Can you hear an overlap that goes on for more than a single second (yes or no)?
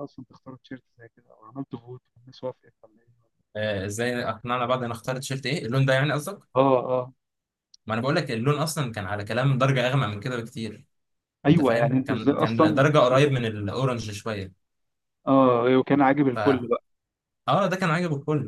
yes